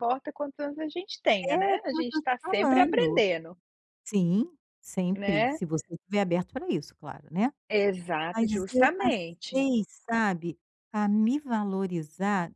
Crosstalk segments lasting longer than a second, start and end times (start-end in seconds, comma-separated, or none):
1.4-3.2, 8.3-9.7